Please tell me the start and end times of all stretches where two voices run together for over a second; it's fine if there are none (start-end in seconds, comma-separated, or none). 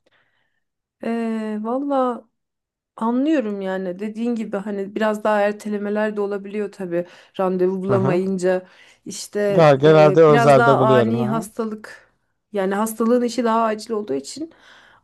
9.8-11.4